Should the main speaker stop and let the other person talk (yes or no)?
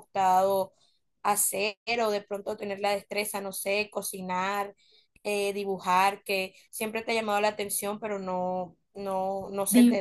yes